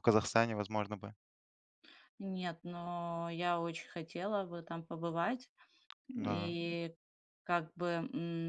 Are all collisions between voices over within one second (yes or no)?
yes